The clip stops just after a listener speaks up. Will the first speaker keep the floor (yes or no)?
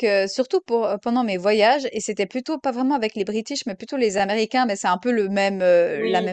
yes